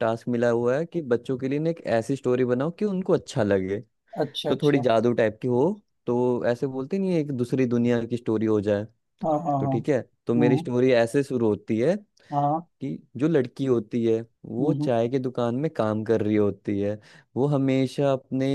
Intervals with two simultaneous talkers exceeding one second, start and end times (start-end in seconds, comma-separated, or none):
none